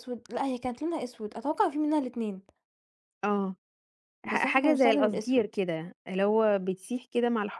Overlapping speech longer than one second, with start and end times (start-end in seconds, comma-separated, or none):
4.2-5.5